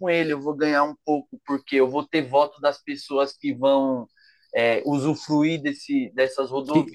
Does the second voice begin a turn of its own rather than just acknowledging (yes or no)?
yes